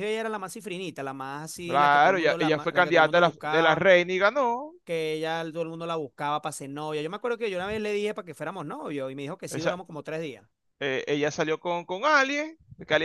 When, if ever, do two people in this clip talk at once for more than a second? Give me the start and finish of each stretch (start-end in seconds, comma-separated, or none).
1.6-3.9